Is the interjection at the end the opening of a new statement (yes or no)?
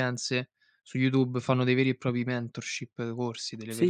yes